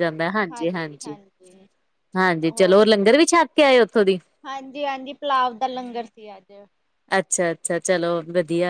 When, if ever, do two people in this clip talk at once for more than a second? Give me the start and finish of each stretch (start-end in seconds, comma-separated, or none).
none